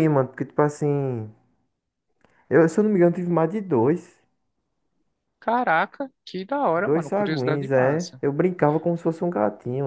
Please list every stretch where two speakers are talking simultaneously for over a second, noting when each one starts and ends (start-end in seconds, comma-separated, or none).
6.7-8.2